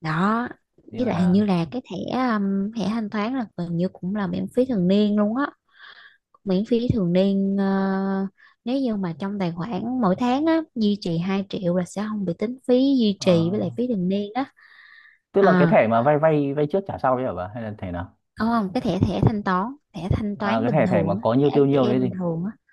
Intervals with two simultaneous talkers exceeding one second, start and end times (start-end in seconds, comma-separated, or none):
20.4-22.2